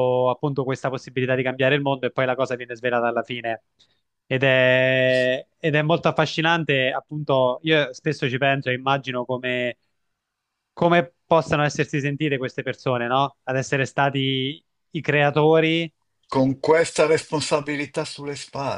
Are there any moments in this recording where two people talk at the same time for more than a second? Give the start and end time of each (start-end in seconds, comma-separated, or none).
none